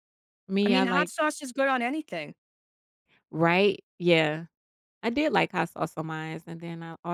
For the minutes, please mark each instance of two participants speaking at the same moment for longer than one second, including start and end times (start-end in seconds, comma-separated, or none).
none